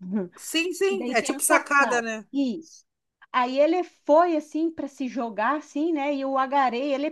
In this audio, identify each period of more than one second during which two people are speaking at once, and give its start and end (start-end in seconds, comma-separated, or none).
0.9-2.2